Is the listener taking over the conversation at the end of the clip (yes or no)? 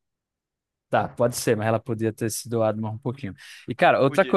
no